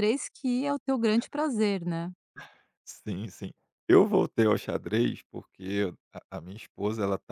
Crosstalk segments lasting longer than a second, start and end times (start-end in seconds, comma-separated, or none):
none